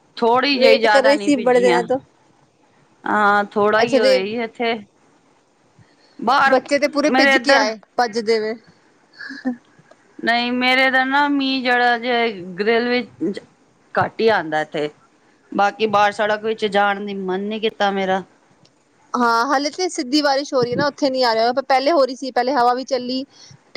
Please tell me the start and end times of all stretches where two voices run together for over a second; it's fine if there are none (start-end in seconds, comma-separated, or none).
0.6-1.8